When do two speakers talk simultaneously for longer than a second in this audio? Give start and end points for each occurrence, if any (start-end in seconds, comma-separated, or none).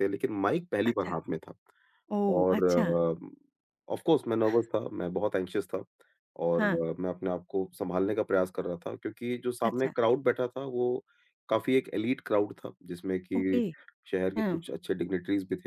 none